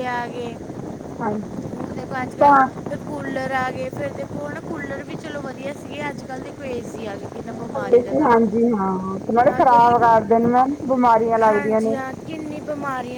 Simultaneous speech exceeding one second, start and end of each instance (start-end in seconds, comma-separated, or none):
none